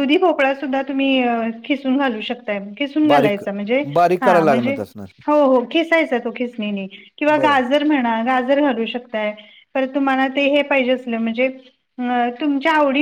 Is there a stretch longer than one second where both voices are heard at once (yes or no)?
no